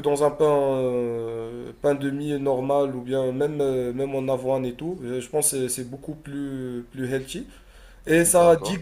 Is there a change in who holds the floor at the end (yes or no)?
no